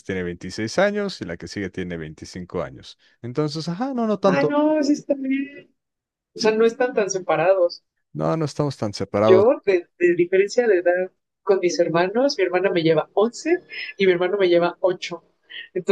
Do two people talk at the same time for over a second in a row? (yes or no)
no